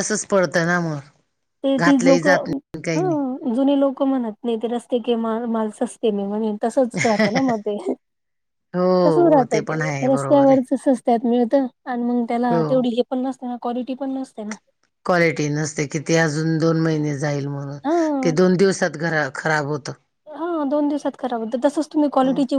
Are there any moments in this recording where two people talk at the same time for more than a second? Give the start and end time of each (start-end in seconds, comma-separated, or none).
9.1-10.7